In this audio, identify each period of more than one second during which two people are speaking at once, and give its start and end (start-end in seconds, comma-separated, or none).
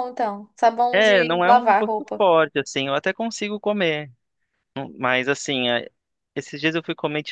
0.9-2.2